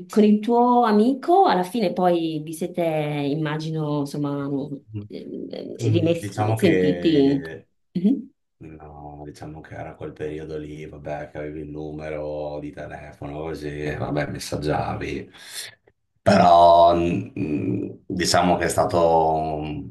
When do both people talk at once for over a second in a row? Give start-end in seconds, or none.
5.8-7.4